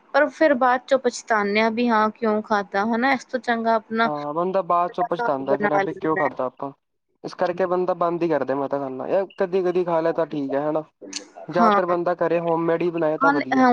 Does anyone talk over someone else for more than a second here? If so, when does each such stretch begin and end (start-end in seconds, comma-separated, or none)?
4.9-6.3